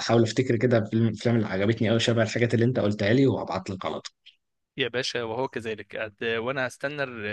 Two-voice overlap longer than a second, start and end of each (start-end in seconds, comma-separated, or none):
none